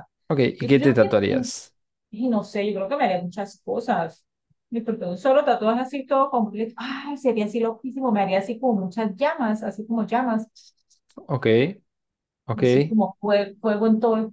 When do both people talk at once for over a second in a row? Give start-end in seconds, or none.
none